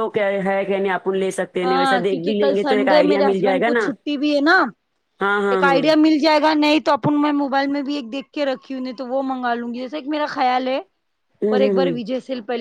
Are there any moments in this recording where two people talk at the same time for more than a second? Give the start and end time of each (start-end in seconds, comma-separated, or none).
1.6-3.9